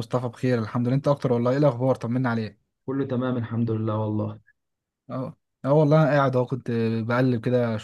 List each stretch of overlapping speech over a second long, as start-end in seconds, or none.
none